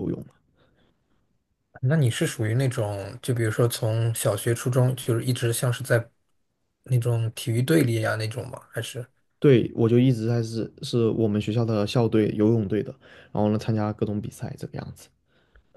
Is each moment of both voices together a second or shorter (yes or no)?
yes